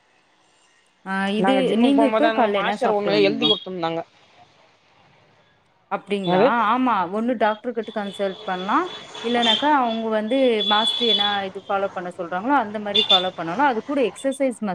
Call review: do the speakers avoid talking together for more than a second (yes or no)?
no